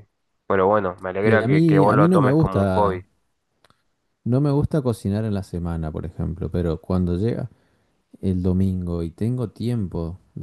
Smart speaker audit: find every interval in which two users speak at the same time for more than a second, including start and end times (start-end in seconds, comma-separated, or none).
1.2-3.0